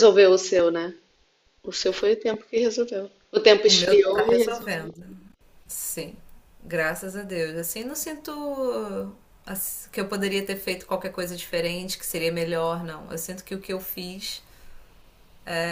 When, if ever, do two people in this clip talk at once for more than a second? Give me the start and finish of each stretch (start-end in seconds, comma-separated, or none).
3.6-5.0